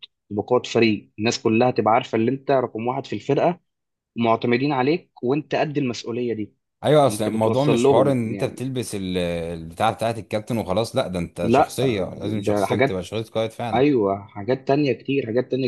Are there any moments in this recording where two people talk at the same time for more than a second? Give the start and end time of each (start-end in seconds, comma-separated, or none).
7.1-8.7